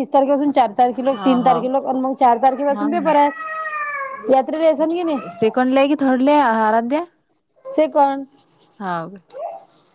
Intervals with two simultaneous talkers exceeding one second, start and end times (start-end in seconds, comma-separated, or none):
none